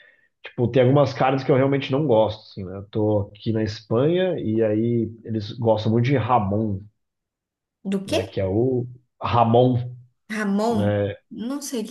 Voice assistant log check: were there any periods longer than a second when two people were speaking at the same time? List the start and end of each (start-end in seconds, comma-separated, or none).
none